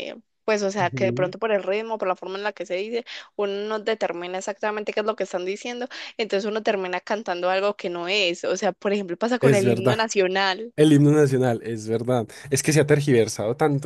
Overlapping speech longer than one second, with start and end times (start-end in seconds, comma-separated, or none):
none